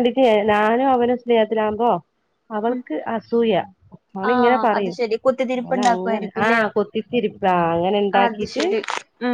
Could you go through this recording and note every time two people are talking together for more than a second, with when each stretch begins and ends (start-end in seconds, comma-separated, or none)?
4.3-6.6